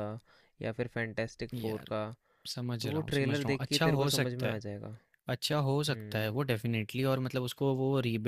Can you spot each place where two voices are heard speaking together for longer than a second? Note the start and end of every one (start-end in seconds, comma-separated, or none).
2.8-4.6